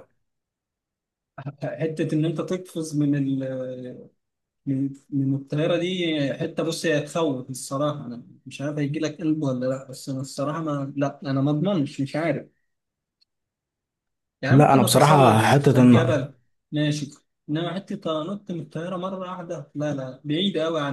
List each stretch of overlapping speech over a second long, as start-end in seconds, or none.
14.5-15.9